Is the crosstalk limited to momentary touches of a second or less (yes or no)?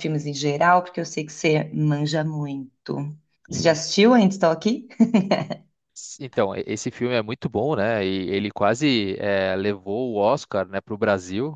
yes